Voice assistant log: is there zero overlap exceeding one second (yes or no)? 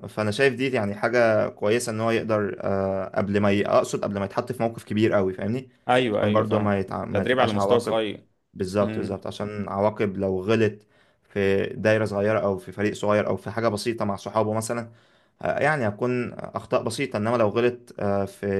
no